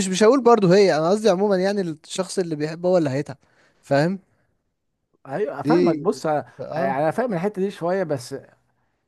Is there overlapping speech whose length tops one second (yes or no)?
no